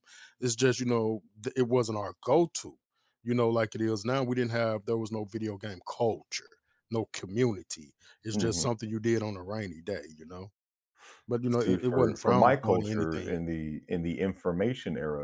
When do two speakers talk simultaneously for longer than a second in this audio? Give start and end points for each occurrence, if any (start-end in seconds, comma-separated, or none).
11.5-13.4